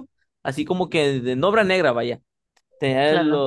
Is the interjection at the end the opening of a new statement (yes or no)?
no